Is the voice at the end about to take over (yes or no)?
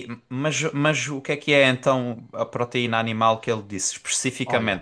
no